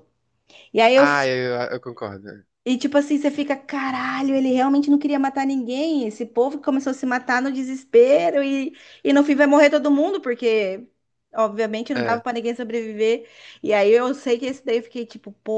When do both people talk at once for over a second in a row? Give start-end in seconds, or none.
none